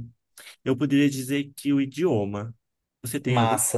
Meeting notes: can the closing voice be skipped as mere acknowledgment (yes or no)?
no